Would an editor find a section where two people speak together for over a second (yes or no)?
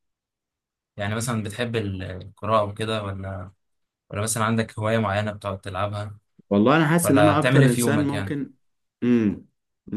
yes